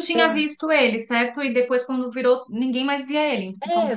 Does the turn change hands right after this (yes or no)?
yes